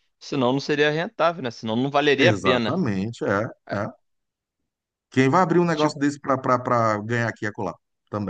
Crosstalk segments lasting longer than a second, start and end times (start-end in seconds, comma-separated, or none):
none